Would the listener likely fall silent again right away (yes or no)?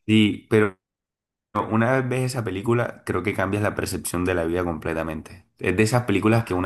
yes